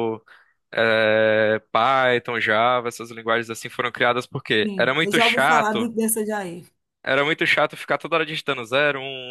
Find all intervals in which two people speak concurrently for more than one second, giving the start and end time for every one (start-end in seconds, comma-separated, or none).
4.6-5.9